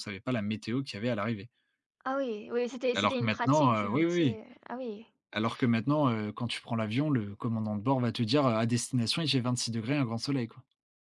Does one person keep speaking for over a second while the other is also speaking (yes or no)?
yes